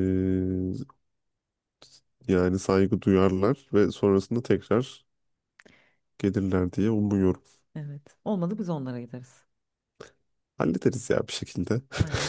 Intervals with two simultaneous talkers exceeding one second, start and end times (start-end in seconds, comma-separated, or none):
none